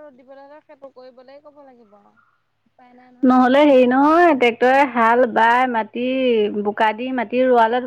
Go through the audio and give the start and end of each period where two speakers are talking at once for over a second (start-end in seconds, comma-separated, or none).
none